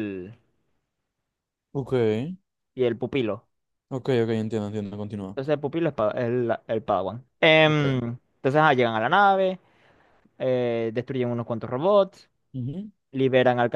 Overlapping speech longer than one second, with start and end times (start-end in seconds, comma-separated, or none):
none